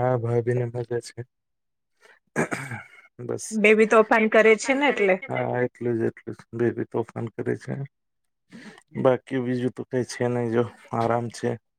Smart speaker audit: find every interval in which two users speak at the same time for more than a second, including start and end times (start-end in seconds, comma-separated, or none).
none